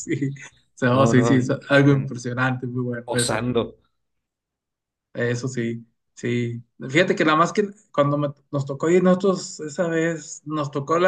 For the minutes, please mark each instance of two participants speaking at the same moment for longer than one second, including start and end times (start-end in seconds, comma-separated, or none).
0.9-2.1